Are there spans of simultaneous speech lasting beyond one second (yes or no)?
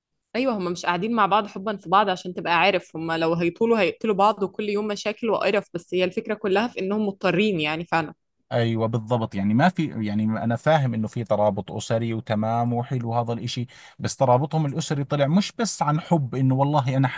no